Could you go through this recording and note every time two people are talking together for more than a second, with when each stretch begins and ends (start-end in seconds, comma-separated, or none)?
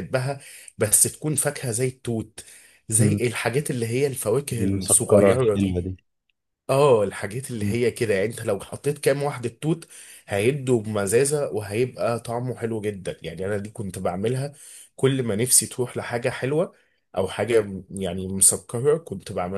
4.6-5.9